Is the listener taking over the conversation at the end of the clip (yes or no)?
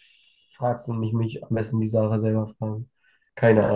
yes